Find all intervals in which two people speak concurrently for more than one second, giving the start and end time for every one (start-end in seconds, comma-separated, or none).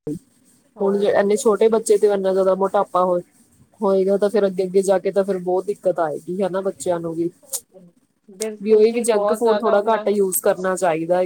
8.6-10.2